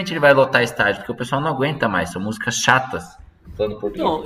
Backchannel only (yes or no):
no